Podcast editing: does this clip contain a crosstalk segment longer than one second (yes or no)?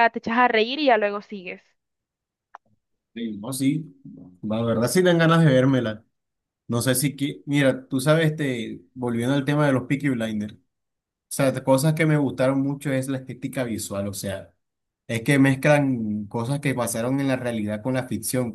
no